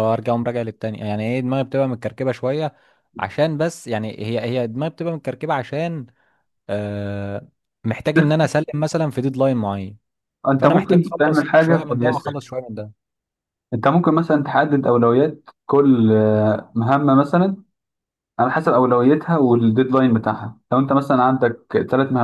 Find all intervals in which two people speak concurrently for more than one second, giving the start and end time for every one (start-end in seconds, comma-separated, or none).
10.6-12.4